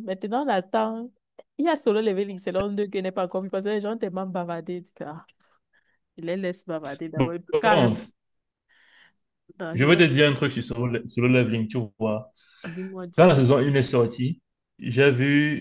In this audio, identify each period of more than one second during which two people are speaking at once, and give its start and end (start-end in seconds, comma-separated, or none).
none